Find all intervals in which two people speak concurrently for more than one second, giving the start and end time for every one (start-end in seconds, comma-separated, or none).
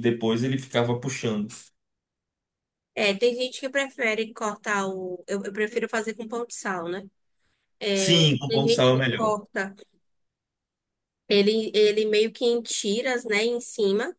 7.9-9.4